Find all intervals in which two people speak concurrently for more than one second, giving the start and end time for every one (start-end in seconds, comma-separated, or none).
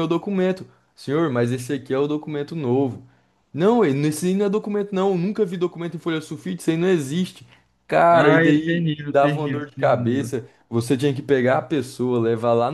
8.1-10.3